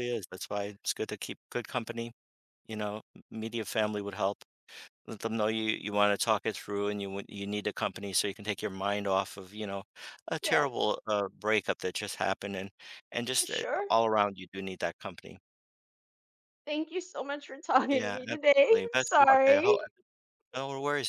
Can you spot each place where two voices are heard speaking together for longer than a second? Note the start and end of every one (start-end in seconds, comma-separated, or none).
17.9-19.8